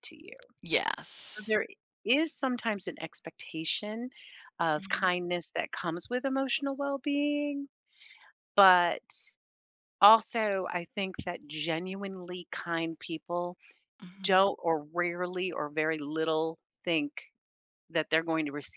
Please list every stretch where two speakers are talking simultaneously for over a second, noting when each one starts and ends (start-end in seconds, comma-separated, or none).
none